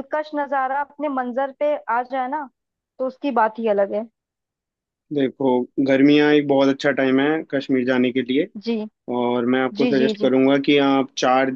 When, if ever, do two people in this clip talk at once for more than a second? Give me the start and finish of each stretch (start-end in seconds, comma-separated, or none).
none